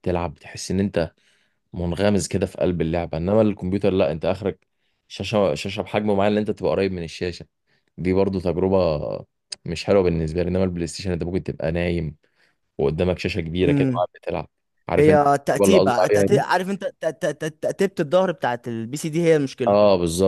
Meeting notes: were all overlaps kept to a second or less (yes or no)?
no